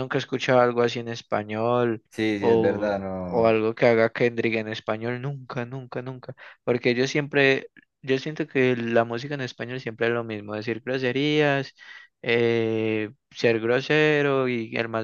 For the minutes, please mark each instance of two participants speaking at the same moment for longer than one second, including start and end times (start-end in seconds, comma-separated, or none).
2.4-3.6